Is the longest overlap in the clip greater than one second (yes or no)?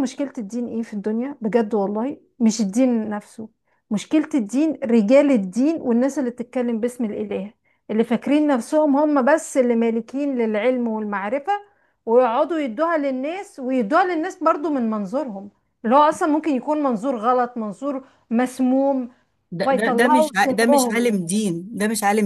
yes